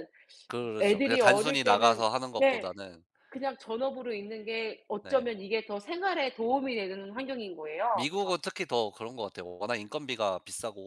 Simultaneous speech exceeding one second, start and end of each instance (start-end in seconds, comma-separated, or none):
0.8-2.7